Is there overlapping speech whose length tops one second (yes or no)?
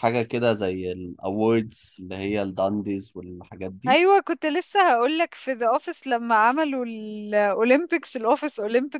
no